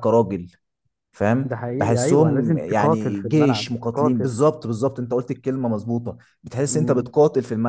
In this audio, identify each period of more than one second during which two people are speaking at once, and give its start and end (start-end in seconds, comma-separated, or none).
1.4-4.4